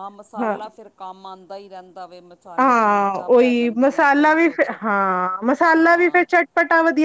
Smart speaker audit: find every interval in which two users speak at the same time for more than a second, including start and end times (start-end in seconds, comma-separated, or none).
2.6-4.7